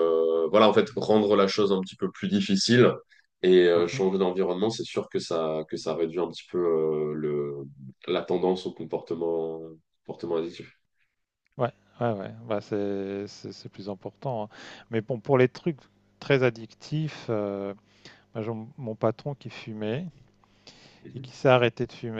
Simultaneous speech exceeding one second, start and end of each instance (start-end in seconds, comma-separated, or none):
none